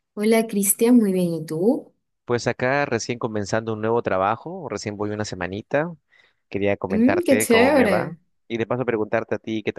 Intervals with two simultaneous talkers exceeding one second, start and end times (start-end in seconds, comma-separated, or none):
6.9-8.2